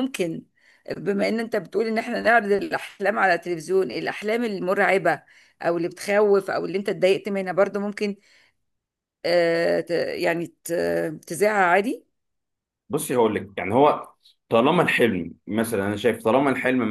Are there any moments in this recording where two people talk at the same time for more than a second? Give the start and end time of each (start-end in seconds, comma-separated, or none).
none